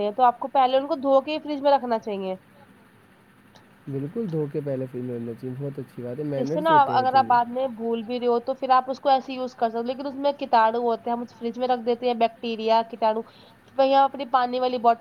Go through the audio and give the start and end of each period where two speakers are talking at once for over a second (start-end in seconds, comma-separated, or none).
none